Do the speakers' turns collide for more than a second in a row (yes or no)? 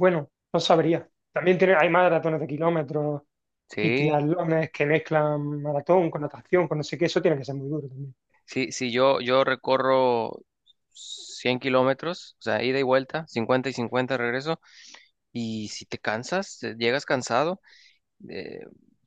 no